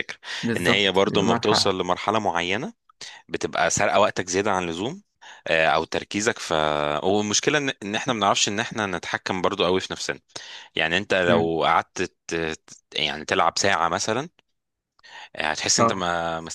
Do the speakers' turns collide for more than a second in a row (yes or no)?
yes